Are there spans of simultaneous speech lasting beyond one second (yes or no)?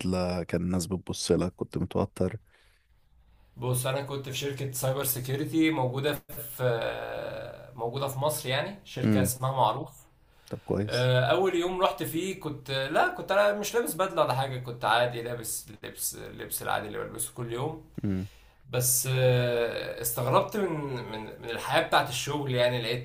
no